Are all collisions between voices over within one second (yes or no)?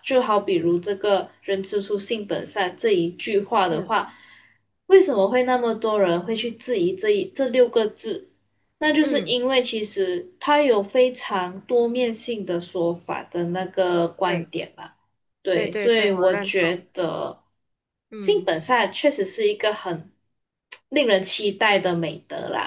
no